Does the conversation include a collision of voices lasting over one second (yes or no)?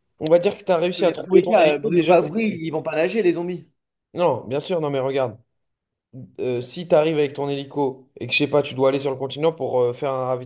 yes